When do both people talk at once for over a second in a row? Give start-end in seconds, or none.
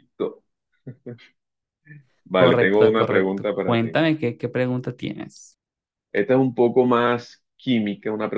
2.3-4.0